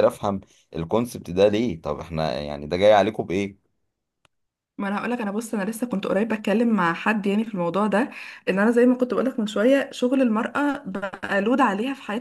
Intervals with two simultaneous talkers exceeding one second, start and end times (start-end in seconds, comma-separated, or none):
none